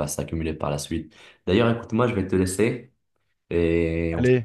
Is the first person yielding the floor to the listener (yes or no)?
yes